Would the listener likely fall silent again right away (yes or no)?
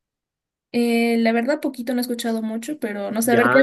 no